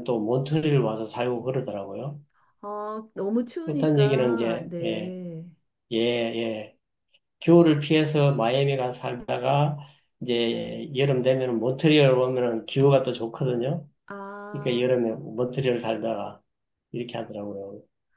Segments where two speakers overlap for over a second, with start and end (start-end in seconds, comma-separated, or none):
3.6-5.2